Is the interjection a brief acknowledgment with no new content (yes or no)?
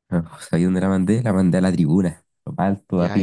no